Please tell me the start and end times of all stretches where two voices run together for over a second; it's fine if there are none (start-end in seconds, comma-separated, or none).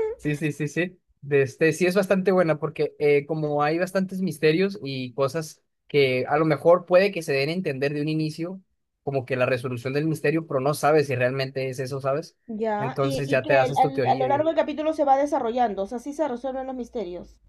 12.8-14.4